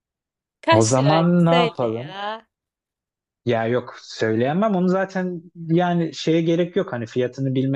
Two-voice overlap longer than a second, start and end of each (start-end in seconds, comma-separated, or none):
0.7-2.1